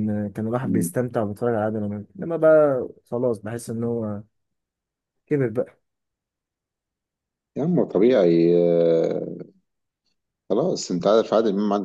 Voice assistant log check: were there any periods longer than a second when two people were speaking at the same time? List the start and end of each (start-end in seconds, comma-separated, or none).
none